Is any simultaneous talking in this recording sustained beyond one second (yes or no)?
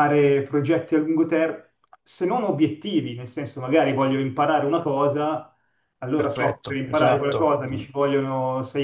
yes